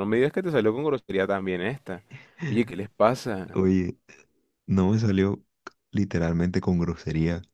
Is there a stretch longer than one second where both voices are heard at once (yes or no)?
no